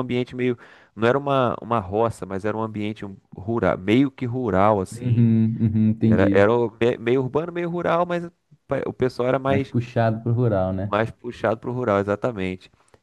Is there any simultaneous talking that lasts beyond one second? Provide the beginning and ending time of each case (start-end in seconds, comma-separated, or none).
none